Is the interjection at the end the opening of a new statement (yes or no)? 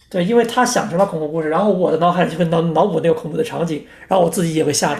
yes